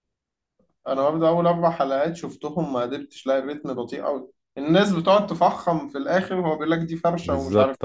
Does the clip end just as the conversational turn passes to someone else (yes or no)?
yes